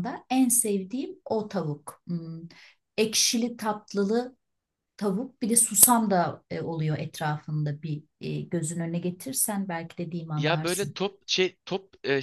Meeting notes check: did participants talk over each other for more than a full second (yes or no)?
no